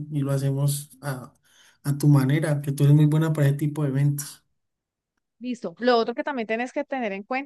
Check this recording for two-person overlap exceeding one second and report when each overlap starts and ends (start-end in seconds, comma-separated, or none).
none